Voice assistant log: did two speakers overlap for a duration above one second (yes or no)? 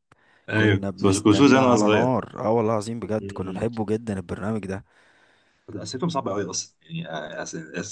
yes